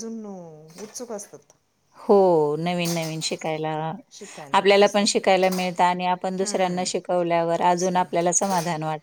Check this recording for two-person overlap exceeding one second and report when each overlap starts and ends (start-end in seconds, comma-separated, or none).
6.4-8.3